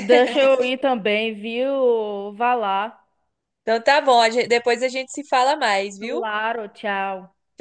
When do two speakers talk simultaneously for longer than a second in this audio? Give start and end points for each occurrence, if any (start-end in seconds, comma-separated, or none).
none